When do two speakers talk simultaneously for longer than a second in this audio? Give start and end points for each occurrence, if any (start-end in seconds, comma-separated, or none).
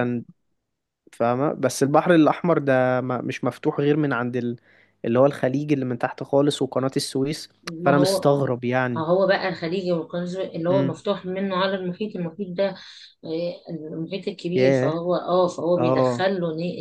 none